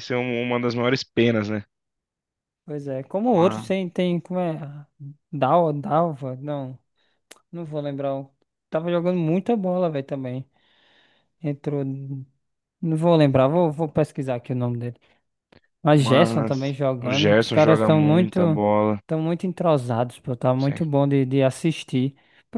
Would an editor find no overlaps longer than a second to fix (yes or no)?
no